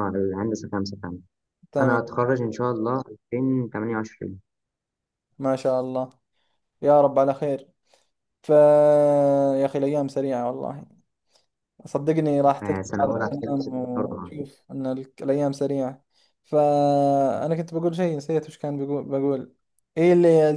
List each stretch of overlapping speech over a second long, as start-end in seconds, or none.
12.6-14.3